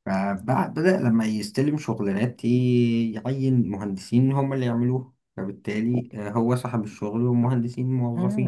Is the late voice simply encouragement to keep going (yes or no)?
no